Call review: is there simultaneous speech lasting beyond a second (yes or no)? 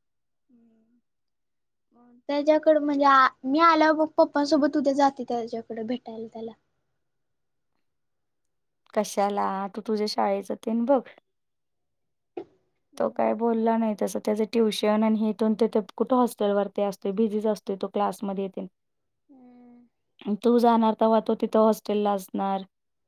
no